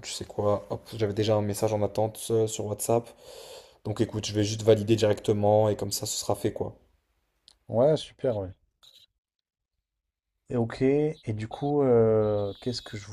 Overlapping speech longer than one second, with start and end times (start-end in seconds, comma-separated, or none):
none